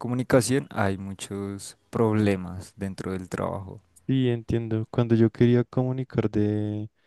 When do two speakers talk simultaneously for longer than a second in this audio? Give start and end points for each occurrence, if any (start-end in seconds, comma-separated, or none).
none